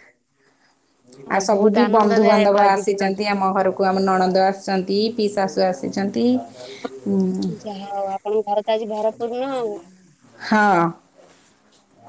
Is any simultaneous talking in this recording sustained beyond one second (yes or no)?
yes